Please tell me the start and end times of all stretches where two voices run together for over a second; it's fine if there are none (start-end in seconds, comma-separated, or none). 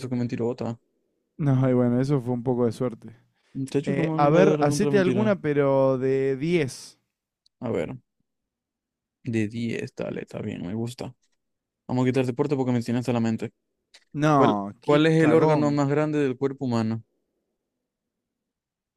3.8-5.3, 14.3-15.8